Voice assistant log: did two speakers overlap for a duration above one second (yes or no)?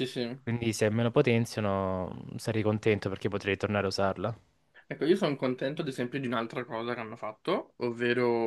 no